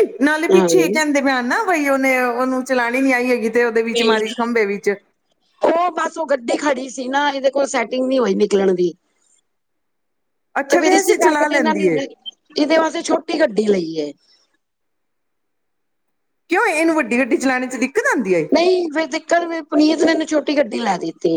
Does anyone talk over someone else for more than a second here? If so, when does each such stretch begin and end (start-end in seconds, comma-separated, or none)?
none